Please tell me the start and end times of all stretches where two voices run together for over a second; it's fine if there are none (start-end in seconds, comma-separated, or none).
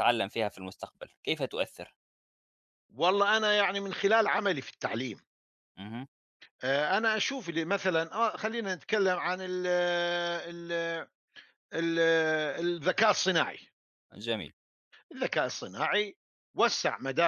none